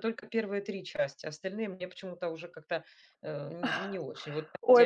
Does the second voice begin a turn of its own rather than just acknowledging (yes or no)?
yes